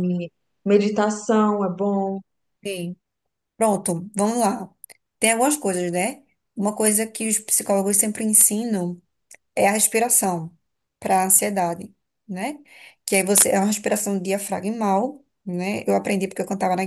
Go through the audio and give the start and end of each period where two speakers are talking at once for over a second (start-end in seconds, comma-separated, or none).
none